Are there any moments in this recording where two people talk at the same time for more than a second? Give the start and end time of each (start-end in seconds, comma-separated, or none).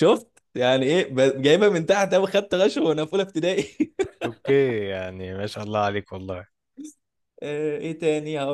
none